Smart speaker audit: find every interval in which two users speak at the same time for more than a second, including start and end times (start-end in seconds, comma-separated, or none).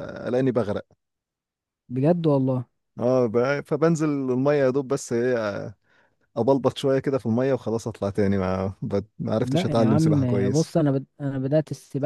9.4-10.7